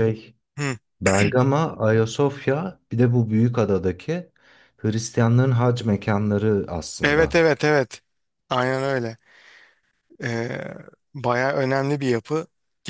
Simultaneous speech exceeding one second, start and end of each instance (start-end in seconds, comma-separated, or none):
none